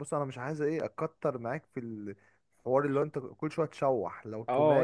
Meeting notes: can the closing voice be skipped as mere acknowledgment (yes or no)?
no